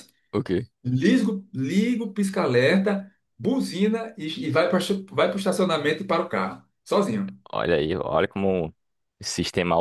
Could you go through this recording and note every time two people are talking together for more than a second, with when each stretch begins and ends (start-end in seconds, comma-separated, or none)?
none